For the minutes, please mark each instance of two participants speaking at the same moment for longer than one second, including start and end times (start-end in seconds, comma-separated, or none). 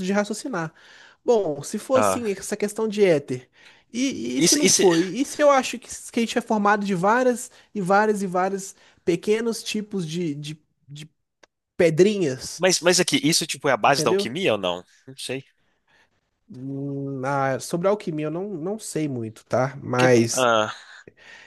none